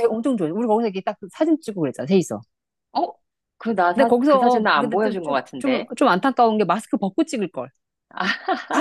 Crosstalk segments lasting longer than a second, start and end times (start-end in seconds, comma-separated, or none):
3.9-5.9